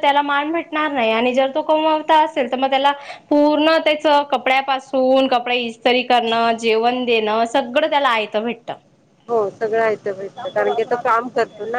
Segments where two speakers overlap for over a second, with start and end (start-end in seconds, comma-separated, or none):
none